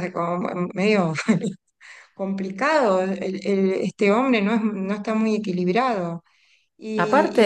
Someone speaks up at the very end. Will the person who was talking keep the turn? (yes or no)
yes